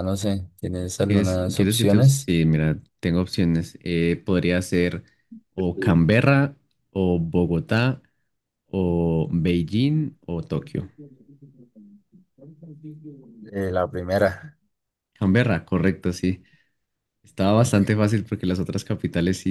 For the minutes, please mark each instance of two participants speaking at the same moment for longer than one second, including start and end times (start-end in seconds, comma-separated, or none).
1.1-2.3